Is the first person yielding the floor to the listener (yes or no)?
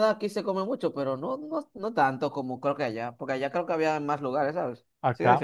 yes